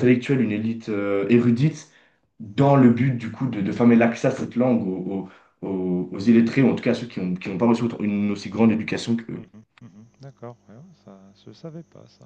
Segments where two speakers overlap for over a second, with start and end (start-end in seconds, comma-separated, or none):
none